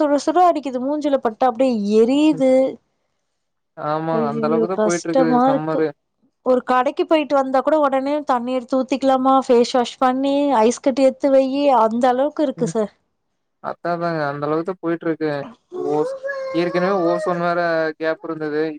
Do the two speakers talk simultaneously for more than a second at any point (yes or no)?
yes